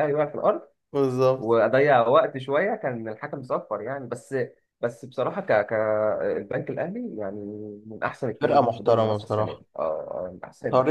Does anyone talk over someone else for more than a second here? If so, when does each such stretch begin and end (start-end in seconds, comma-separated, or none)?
8.4-9.6